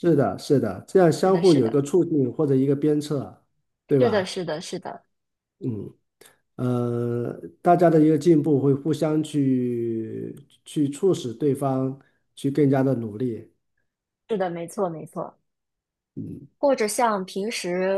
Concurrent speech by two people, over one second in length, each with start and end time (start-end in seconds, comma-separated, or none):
none